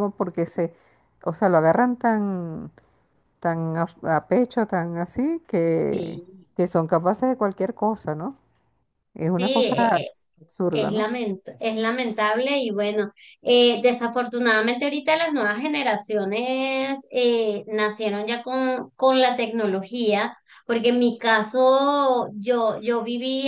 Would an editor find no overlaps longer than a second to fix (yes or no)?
yes